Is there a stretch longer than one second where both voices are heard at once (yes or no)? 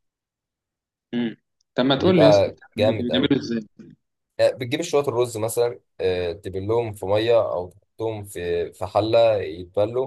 yes